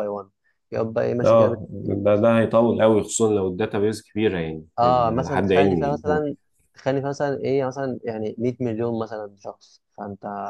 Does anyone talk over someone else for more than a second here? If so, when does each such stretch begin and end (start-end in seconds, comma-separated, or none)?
4.8-6.3